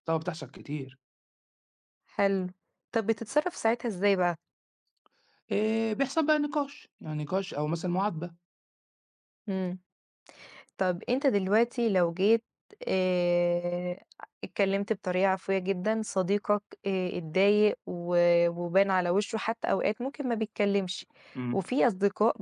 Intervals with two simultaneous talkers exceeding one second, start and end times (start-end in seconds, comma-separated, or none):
none